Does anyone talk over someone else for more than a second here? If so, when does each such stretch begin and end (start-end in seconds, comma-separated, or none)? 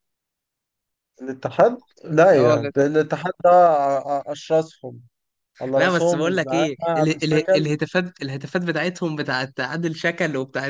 5.8-7.7